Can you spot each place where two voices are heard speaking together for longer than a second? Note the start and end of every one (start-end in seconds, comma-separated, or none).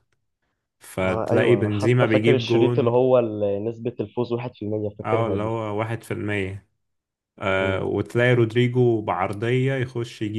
1.0-2.9